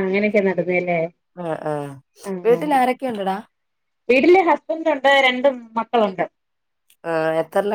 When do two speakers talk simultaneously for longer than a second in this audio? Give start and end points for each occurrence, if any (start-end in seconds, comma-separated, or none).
none